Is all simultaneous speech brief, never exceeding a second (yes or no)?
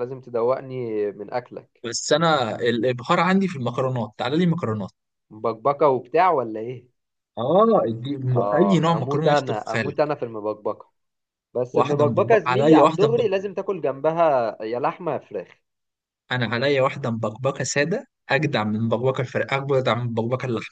no